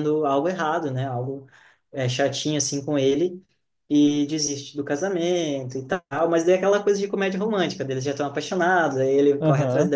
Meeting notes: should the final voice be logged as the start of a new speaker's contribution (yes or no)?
no